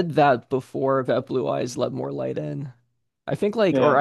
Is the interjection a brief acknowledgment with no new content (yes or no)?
yes